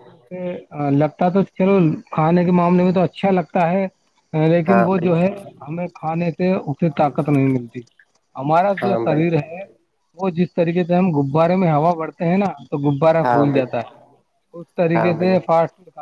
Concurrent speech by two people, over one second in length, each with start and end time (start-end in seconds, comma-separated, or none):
none